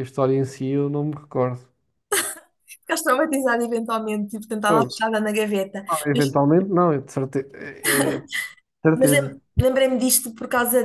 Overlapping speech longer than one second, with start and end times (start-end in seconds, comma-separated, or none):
none